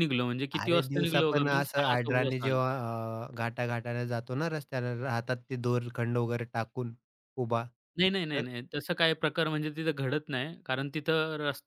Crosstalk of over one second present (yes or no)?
yes